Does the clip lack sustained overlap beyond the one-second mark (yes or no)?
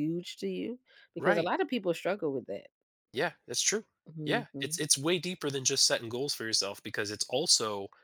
yes